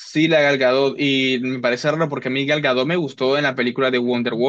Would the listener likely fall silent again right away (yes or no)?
yes